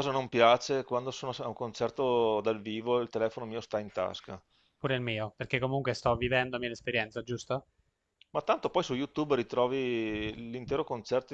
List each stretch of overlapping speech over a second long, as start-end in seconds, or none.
none